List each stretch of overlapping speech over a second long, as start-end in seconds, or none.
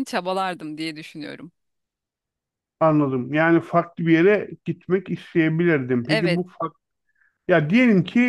none